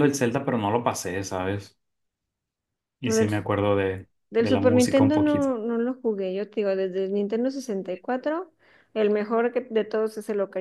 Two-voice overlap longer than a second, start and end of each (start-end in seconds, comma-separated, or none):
4.3-5.5